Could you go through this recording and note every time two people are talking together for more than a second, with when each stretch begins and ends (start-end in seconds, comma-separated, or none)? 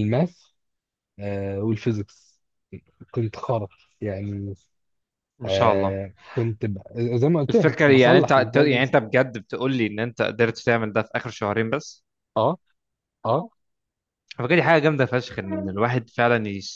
7.5-8.9